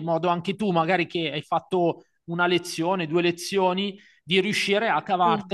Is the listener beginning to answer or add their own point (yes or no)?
no